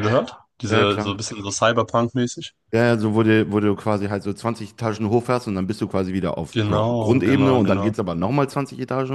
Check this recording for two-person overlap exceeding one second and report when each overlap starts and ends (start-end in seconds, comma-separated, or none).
6.5-7.9